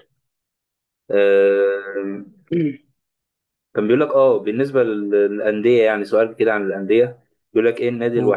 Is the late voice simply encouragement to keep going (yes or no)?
yes